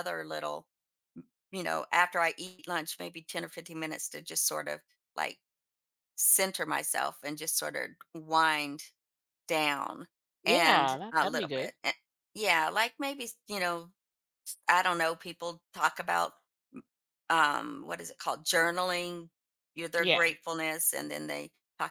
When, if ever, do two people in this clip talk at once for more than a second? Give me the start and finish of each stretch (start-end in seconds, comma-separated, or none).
10.4-11.7